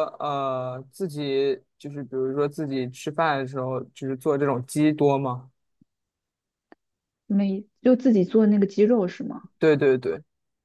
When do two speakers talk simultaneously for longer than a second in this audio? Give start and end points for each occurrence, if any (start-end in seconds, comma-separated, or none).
none